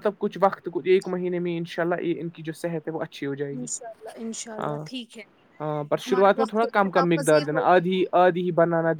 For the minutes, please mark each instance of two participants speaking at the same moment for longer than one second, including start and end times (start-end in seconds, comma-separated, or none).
6.1-7.7